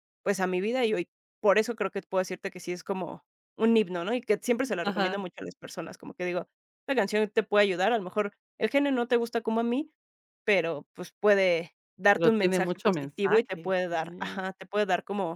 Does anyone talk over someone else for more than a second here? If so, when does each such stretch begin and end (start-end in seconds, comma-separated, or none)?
12.1-14.4